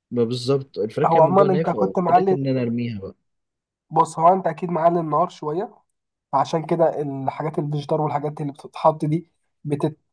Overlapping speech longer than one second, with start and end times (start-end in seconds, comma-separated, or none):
1.1-2.4